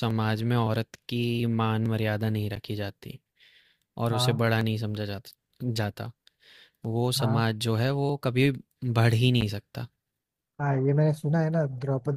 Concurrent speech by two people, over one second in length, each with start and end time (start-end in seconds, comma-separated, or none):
none